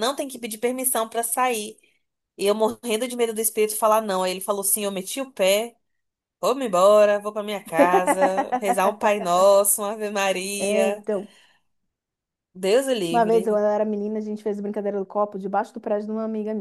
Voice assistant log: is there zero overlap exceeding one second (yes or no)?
yes